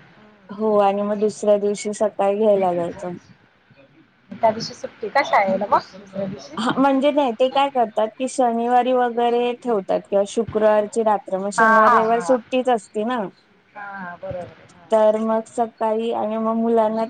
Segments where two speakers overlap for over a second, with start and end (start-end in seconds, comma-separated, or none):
none